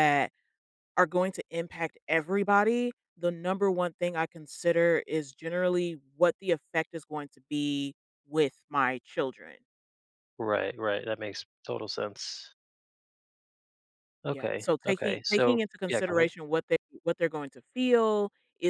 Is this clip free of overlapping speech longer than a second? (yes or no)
no